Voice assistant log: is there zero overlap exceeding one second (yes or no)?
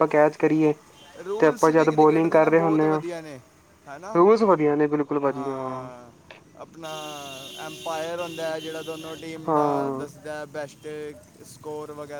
no